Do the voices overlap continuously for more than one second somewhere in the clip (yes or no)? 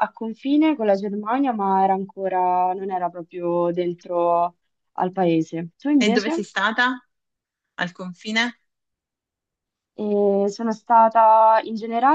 no